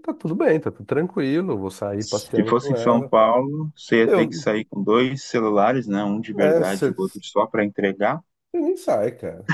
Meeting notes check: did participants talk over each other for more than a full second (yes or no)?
yes